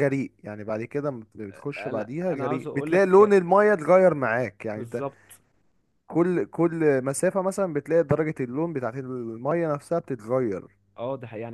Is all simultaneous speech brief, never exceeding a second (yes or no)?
no